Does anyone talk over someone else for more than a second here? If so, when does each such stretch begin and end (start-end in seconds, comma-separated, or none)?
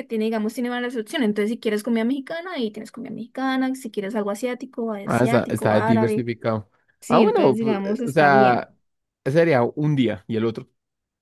5.0-6.3, 7.1-8.7